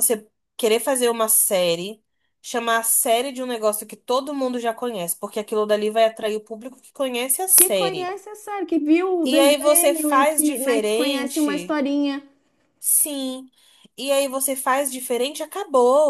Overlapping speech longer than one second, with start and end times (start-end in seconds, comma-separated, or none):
9.2-11.8